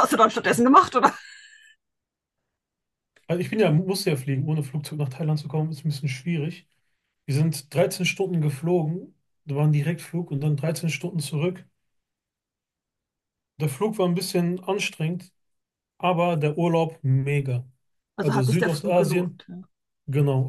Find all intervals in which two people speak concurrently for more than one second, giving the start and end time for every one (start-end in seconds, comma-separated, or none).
18.2-19.4